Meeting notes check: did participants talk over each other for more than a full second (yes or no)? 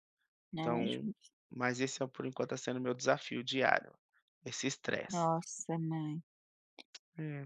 no